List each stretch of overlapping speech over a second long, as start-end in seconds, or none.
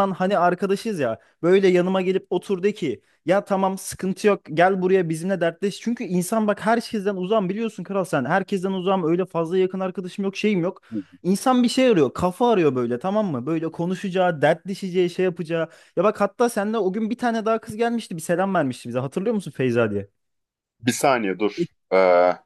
none